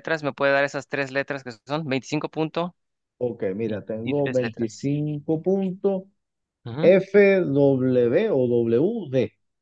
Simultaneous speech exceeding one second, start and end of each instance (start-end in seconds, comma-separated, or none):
3.6-4.9